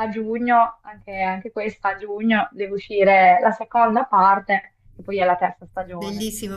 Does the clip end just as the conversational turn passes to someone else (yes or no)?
yes